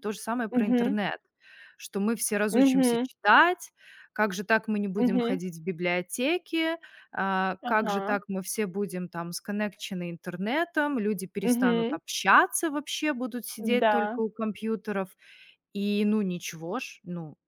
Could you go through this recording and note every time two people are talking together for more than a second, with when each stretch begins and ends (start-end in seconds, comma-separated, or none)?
none